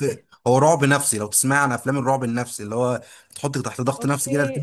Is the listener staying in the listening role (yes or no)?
no